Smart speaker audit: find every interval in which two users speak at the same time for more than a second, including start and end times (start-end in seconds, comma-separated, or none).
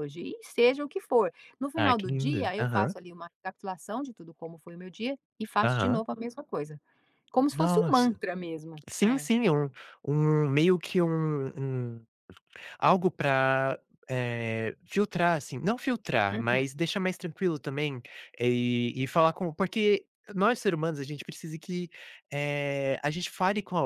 1.8-3.0